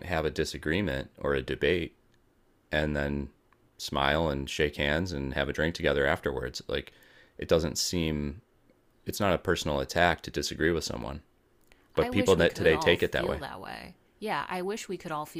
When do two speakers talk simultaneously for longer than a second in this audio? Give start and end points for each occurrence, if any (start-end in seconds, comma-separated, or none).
12.0-13.4